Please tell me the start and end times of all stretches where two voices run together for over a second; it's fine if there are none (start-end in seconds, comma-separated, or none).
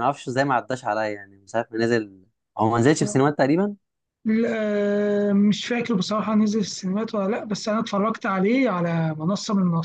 none